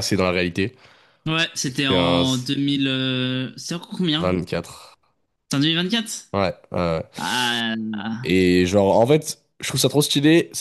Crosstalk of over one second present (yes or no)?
no